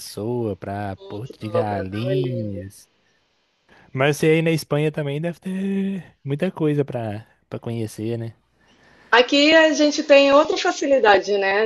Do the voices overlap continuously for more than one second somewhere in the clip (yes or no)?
yes